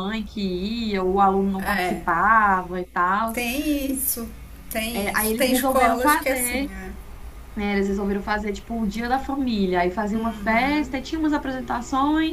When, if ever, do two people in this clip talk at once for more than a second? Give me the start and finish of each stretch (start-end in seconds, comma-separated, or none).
4.9-6.7